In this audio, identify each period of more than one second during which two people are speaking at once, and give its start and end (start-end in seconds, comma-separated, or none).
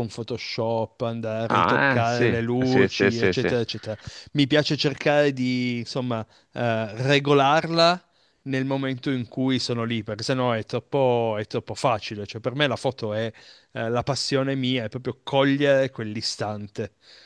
1.5-3.5